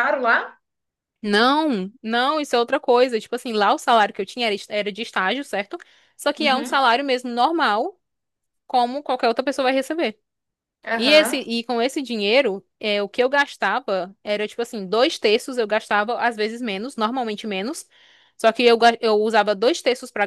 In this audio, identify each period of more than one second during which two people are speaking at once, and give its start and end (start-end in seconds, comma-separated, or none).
none